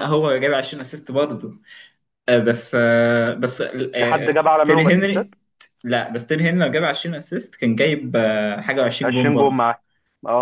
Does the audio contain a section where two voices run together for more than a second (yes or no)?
yes